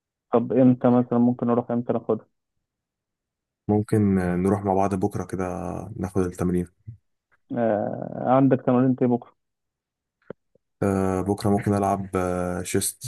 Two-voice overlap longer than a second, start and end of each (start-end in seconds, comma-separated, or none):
none